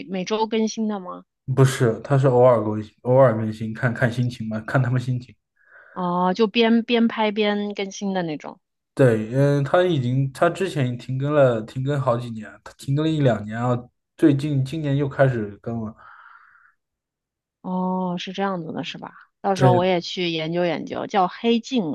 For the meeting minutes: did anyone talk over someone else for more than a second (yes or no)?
no